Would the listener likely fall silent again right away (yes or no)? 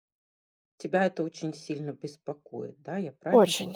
no